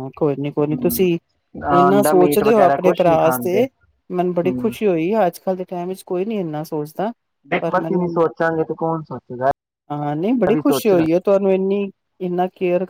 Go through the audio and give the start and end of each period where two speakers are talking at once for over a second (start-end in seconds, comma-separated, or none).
1.9-3.6